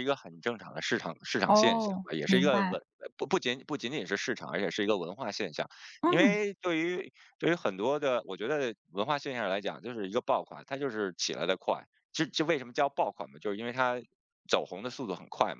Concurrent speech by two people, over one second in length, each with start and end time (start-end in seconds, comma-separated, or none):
1.4-2.8